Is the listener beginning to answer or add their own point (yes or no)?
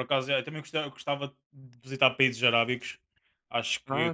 no